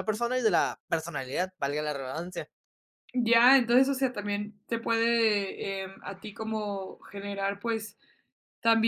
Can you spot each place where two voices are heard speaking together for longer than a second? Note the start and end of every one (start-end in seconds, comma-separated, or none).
none